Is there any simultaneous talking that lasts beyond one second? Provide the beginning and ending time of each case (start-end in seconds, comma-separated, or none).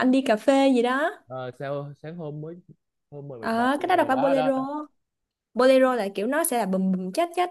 3.4-4.6